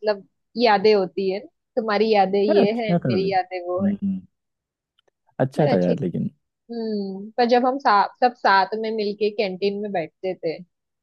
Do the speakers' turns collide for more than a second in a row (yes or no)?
yes